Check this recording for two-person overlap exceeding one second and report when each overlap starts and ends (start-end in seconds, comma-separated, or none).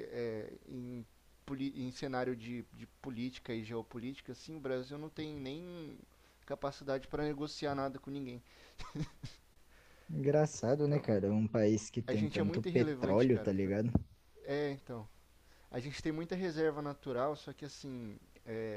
12.1-13.5